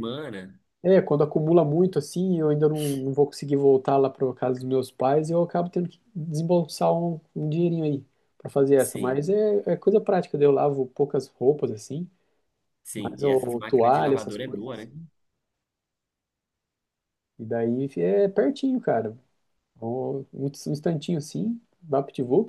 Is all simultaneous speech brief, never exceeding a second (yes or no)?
no